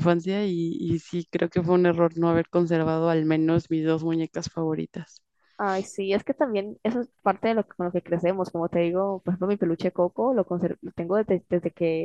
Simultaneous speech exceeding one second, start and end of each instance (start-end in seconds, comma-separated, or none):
none